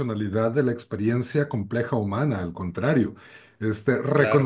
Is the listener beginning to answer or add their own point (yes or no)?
no